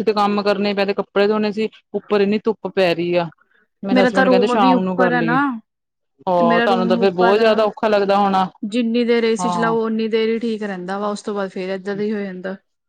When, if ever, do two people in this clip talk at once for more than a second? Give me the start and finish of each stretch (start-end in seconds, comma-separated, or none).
3.9-5.4